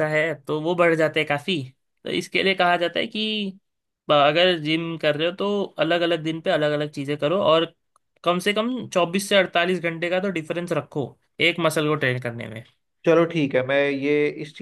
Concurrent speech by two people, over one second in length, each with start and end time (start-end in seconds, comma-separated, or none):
none